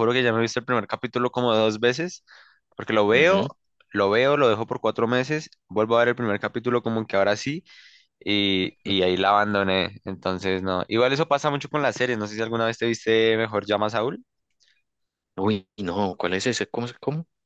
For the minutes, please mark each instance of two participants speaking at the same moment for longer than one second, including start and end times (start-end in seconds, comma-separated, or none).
none